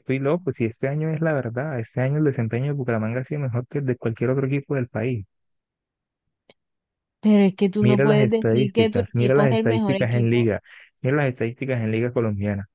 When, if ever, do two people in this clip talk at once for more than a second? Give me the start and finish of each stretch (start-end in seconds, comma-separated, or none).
7.8-10.5